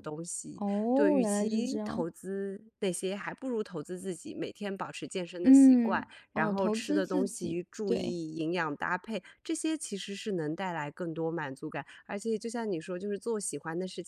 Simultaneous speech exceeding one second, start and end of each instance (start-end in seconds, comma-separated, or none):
0.6-2.0, 5.4-8.2